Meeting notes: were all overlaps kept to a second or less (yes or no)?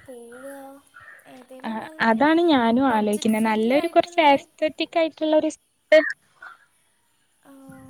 no